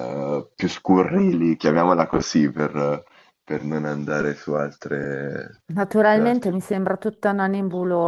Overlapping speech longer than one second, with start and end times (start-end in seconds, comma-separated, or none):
none